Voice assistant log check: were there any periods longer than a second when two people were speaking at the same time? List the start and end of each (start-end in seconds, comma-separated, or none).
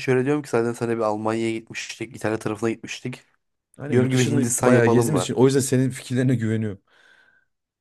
3.9-5.3